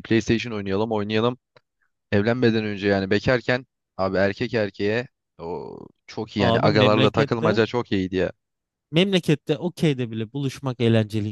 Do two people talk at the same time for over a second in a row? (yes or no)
yes